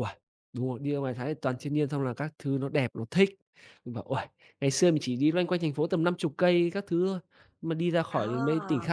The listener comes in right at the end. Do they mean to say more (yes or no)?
no